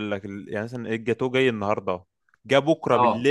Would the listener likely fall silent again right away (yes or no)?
yes